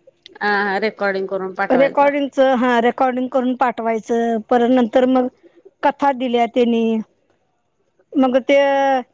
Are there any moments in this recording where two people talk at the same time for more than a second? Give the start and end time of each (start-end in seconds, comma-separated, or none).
none